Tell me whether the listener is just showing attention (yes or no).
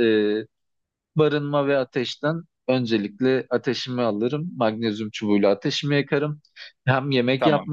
yes